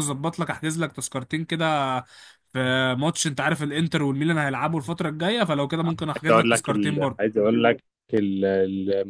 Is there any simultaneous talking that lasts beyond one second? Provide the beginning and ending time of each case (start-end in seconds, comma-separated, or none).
6.0-7.2